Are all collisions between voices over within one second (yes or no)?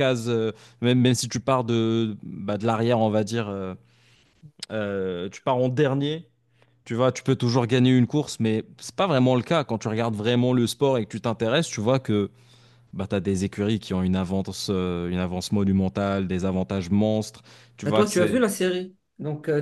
yes